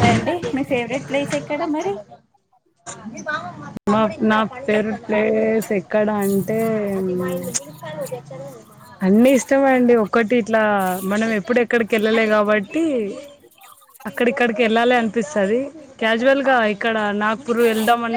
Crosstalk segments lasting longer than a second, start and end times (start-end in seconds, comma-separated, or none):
none